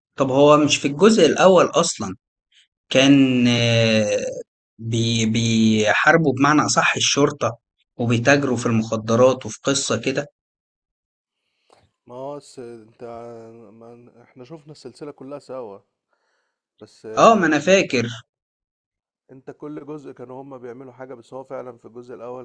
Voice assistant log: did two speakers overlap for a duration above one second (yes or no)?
no